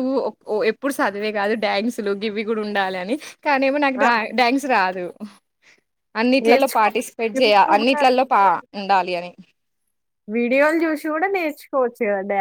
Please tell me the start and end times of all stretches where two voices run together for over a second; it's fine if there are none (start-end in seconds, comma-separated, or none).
6.4-8.4